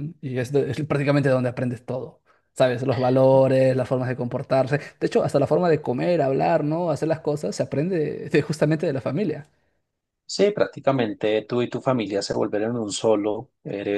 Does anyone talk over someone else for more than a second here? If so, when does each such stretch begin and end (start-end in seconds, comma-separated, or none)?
none